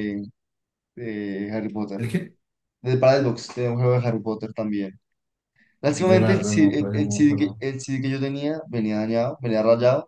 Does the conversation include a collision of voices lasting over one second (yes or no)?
yes